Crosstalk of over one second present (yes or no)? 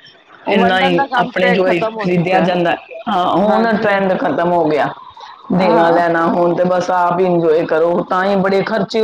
yes